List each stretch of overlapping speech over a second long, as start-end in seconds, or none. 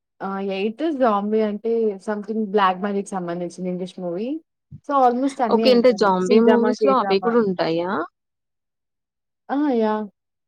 5.5-7.3